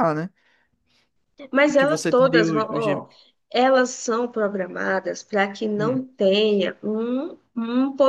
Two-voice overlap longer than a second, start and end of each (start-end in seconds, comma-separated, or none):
1.8-3.1